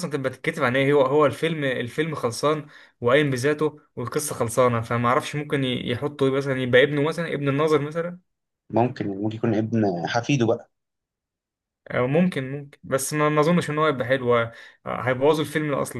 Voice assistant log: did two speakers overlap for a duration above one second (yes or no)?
no